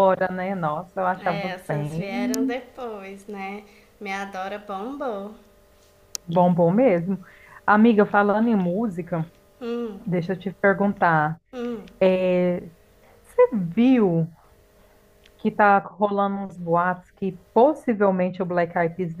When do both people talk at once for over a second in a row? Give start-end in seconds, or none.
1.2-2.6